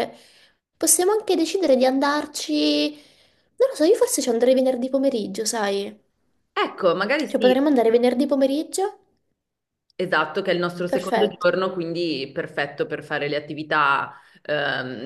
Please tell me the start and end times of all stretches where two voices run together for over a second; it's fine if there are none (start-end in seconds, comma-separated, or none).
none